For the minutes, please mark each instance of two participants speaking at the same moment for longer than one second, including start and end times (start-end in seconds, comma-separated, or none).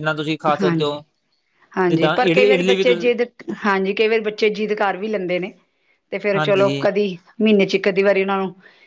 1.9-3.1